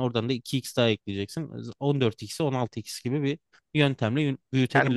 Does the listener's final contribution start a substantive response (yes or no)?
yes